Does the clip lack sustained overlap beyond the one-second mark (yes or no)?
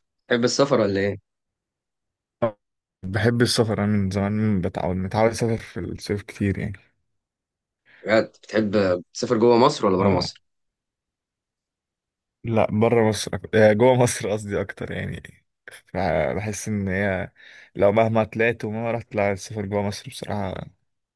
yes